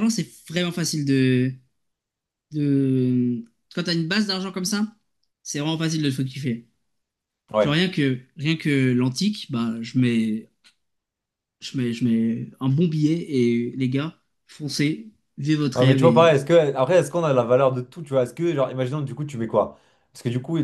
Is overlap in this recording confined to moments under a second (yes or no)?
yes